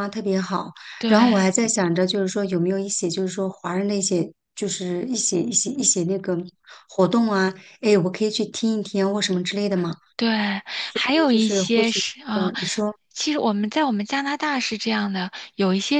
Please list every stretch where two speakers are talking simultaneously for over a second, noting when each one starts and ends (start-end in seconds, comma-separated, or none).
10.9-12.5